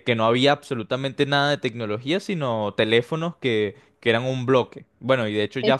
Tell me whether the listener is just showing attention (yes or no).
yes